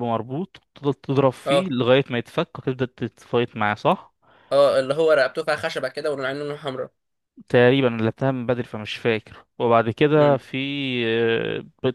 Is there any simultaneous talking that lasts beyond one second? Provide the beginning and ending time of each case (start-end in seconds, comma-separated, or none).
none